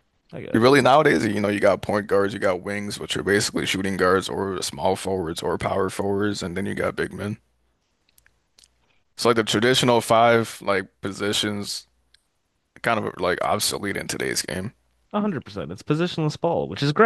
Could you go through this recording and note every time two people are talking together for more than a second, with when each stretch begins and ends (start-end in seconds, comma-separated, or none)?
none